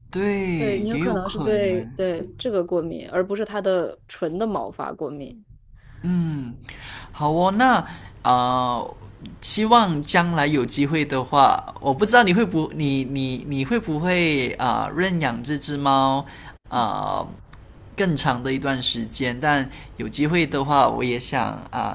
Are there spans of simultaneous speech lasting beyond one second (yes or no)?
yes